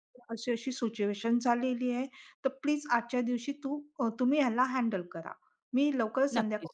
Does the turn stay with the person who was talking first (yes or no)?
yes